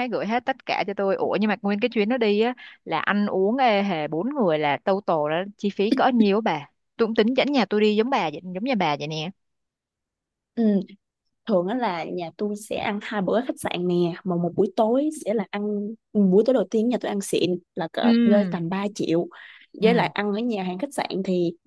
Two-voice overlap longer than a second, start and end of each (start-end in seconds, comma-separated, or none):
none